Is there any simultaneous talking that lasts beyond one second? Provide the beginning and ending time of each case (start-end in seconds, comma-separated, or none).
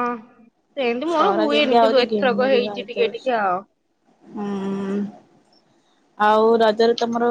1.1-3.3